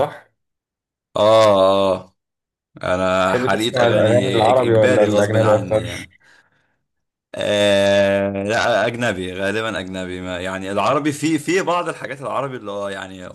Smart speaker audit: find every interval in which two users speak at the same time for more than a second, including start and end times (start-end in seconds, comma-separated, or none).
3.2-6.1